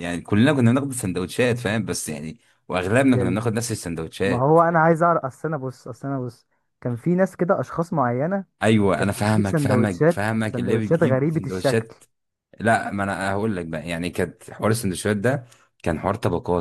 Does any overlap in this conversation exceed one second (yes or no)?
yes